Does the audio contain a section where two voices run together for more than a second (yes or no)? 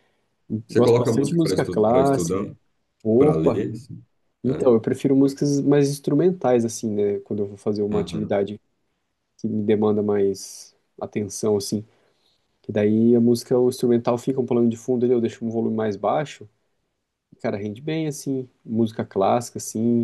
yes